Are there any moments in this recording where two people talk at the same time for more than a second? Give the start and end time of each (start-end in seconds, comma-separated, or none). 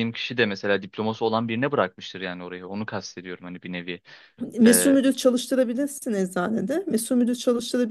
none